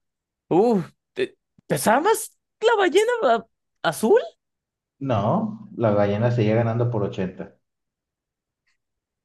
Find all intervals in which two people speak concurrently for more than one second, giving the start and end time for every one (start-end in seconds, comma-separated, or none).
none